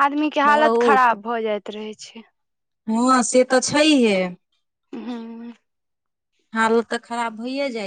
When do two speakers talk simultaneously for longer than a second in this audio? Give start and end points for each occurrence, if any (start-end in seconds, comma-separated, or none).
none